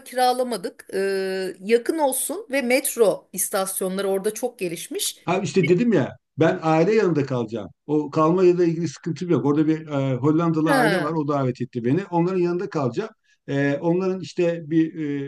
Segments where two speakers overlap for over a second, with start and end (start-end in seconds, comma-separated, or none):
none